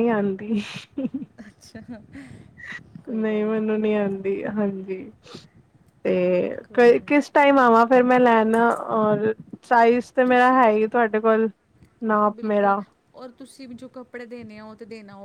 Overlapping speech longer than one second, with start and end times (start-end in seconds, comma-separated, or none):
none